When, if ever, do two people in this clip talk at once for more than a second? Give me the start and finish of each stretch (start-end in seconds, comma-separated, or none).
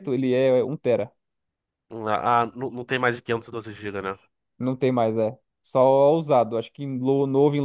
none